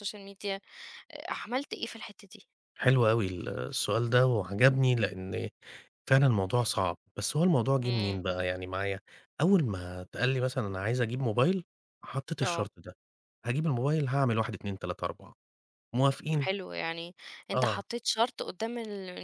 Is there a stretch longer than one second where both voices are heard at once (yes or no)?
no